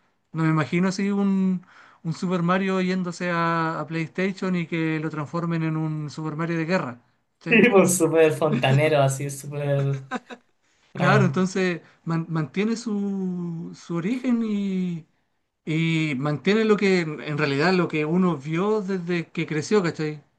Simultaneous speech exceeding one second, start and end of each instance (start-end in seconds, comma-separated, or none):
none